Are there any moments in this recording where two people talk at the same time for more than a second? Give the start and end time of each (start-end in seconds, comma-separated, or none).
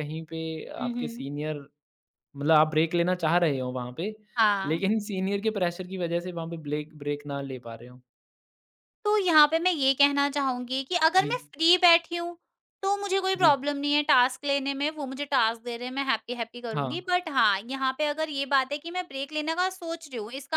none